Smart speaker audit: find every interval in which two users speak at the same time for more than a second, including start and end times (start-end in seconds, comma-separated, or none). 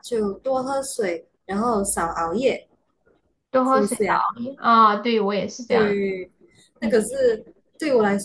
none